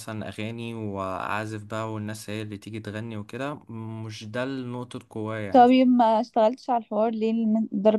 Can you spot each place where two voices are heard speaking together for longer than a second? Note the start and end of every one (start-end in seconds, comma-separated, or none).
none